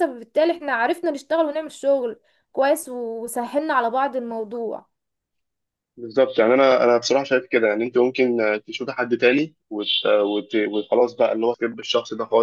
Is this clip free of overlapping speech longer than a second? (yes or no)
yes